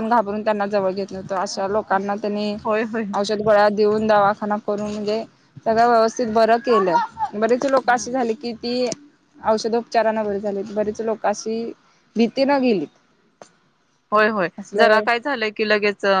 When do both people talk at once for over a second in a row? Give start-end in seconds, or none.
none